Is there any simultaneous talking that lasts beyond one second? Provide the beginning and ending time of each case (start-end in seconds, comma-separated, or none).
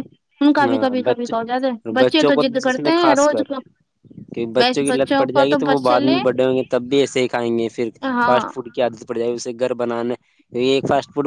0.6-3.4